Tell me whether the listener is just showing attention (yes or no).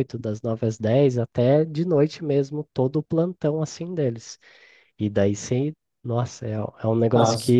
yes